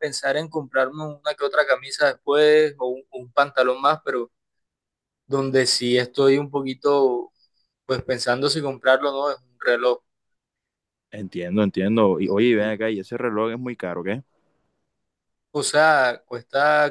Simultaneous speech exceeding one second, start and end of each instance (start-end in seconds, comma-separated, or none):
none